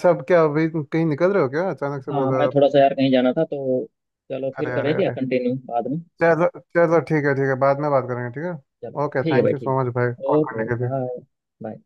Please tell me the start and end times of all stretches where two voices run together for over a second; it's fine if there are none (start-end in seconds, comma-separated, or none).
9.0-10.9